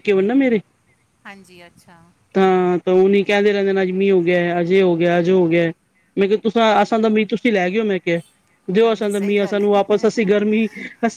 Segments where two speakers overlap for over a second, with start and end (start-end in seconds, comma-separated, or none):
8.8-10.1